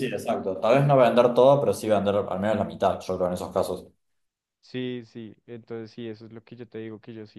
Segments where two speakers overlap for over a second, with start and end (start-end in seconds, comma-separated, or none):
none